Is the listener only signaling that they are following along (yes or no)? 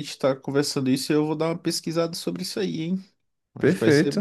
no